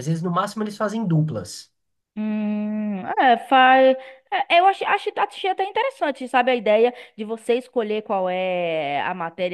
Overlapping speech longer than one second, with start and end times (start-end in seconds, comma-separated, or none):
none